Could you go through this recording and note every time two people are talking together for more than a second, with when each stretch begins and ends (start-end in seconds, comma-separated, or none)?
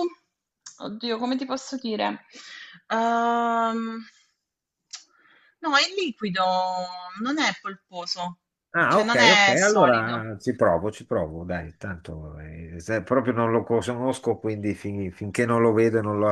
8.8-10.3